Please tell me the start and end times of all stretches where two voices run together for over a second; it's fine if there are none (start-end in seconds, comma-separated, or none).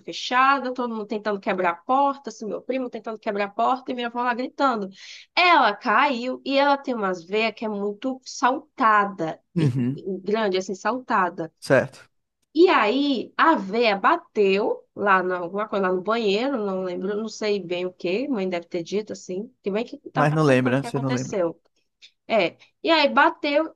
20.1-21.4